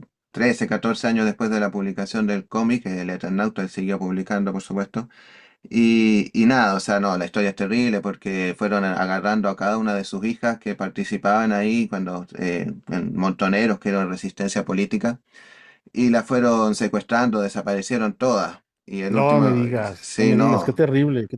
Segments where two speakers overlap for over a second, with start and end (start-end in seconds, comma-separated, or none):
19.1-20.8